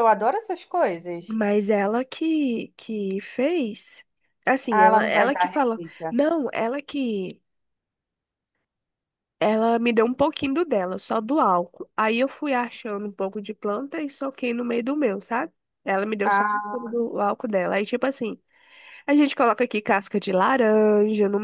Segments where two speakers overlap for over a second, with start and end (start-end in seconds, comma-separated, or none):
4.7-6.2